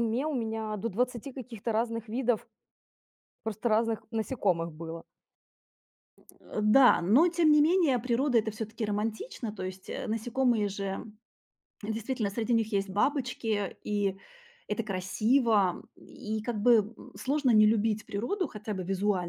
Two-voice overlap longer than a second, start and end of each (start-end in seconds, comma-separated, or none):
none